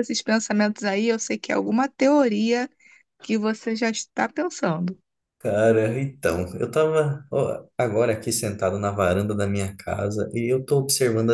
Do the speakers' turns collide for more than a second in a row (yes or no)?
no